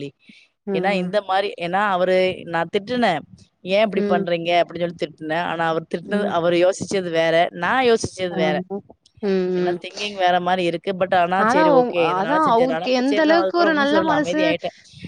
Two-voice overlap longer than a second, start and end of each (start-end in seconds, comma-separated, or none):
11.8-14.4